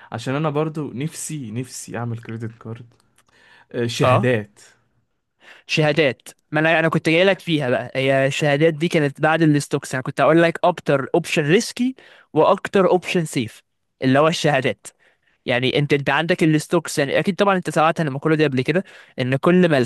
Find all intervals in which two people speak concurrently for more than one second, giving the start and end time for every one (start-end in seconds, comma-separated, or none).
none